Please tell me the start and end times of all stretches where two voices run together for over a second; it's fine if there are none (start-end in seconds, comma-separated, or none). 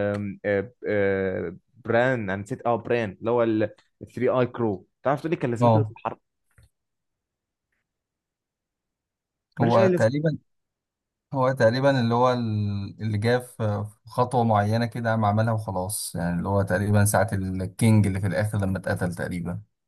none